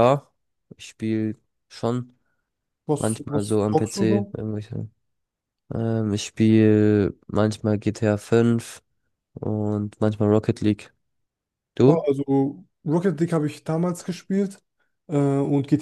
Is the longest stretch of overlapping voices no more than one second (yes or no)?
no